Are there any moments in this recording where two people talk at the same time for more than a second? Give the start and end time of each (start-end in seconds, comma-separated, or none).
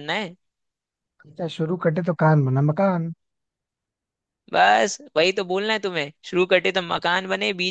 none